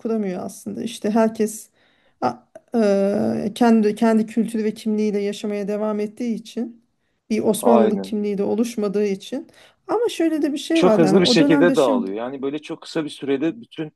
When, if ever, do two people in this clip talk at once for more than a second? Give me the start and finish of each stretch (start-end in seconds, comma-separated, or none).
10.7-12.1